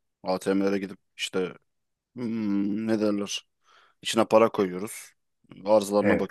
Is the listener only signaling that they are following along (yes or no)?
yes